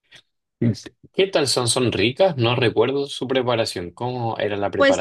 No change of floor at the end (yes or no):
no